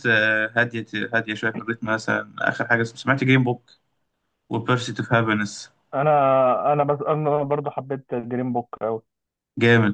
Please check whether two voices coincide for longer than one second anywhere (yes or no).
no